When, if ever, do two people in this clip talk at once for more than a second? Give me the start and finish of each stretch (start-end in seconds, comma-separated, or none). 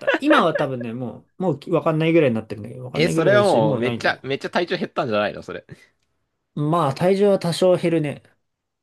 2.9-4.2